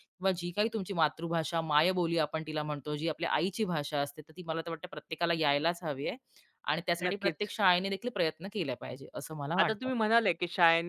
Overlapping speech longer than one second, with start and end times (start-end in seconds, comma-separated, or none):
none